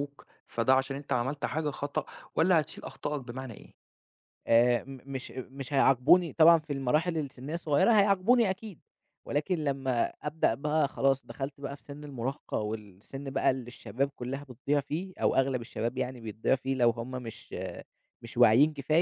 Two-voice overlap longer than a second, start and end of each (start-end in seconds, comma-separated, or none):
none